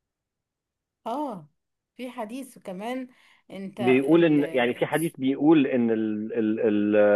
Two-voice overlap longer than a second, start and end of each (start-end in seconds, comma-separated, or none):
none